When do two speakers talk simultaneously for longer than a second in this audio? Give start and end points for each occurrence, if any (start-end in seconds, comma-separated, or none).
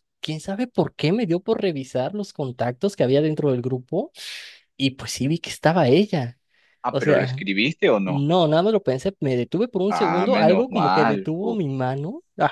9.9-11.6